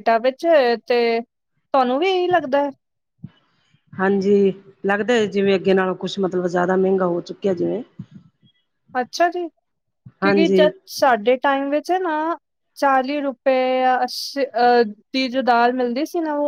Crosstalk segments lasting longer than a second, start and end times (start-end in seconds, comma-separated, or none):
none